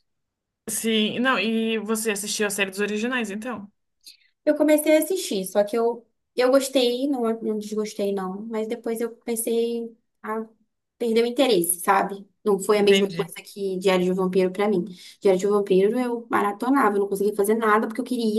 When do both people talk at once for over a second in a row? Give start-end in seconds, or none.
none